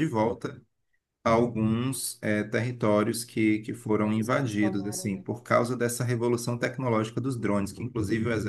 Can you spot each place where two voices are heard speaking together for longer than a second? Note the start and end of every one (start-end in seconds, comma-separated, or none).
3.7-5.2